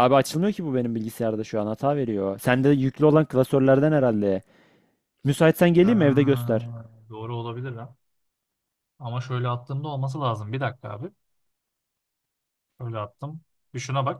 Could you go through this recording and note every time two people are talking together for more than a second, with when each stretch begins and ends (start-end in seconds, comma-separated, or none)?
none